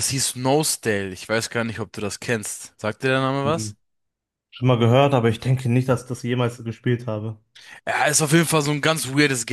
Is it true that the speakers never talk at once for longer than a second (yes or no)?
yes